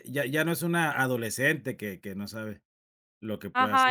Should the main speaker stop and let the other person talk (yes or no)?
yes